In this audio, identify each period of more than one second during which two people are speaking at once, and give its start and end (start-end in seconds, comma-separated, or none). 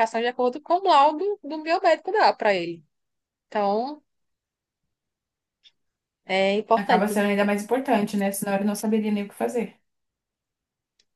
none